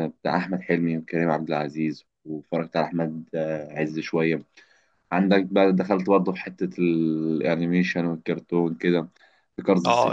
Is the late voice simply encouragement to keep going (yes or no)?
no